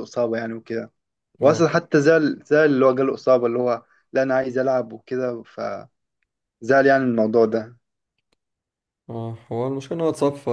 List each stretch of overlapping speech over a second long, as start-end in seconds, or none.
none